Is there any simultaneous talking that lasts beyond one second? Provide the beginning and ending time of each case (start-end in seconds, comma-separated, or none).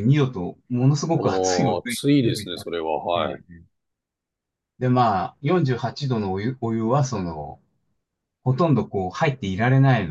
1.2-2.8